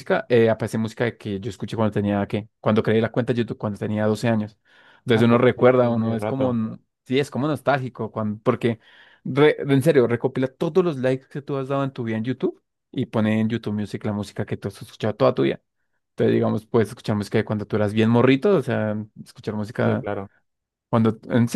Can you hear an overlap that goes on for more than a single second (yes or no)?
yes